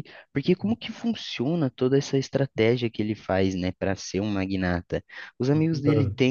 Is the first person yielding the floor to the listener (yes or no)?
no